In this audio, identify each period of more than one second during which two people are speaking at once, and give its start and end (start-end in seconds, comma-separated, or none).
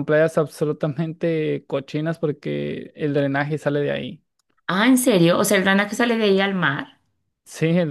none